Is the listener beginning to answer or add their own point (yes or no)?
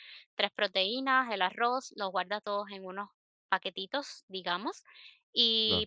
no